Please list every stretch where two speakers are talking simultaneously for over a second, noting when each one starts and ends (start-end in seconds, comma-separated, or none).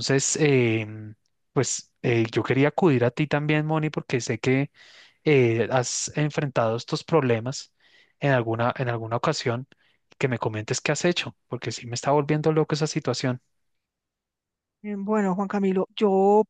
none